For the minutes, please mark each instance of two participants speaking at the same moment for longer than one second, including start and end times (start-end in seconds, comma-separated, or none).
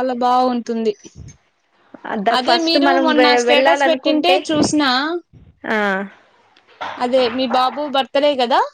2.4-4.4